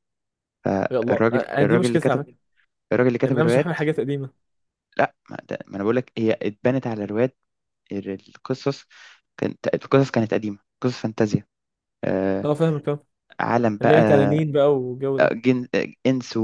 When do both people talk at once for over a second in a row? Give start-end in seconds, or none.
0.9-2.2